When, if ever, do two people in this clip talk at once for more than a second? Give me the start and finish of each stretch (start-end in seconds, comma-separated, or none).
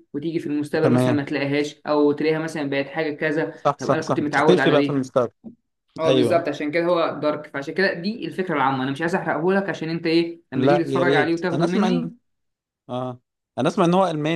3.5-5.0, 10.6-12.1